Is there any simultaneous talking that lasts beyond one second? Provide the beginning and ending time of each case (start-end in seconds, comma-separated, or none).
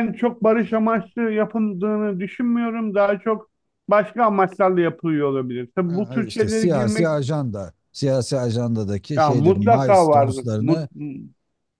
5.9-7.2, 9.2-10.9